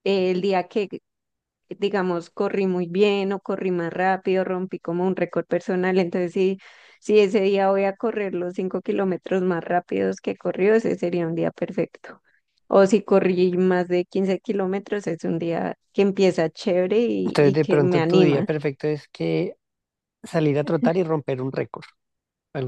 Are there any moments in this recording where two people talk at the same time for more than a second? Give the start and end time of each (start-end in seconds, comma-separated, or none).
17.2-18.5